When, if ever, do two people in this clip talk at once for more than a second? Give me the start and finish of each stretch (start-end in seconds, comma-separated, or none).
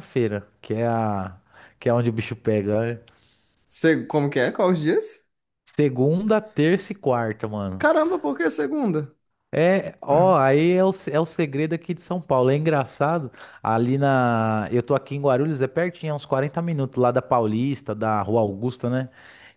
none